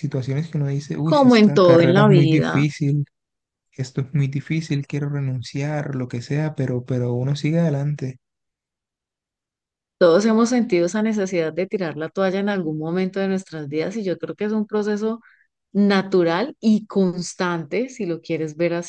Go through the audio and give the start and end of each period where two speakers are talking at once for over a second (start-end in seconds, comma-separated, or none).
1.0-2.6